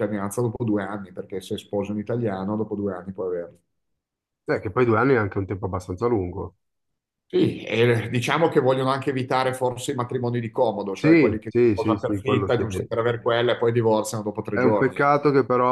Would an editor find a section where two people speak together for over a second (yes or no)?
yes